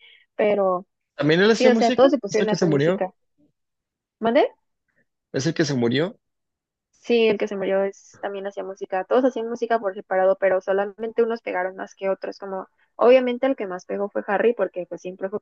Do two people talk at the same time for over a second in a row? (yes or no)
yes